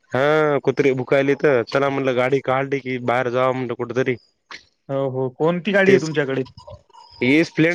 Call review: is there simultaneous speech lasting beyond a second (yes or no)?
no